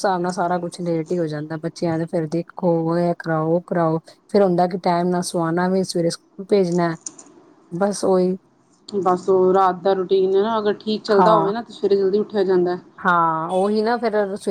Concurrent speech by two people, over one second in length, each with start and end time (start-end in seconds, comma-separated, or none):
none